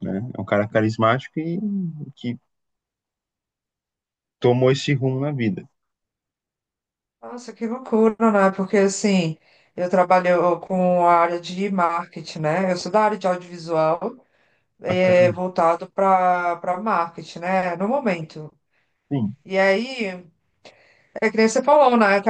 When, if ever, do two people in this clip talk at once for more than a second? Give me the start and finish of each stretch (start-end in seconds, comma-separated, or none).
none